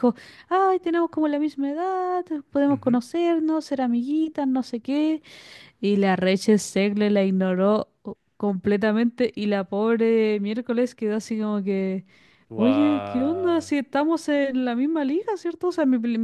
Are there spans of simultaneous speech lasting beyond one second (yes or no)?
yes